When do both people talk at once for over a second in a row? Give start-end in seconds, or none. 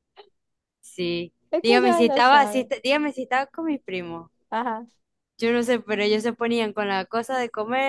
1.5-2.7